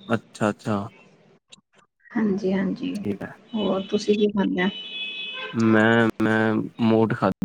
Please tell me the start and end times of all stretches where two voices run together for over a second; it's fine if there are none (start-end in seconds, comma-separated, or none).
none